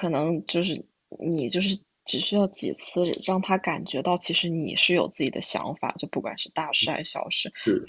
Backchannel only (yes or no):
yes